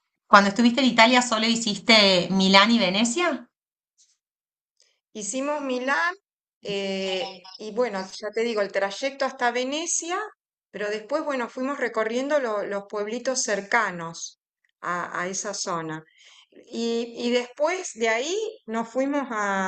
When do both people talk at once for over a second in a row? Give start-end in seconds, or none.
none